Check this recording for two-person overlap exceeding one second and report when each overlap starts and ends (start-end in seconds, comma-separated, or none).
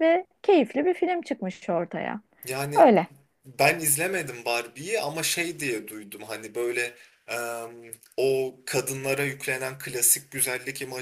none